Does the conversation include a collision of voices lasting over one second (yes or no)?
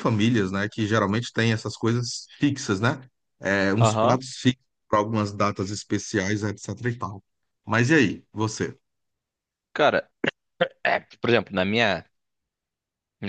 no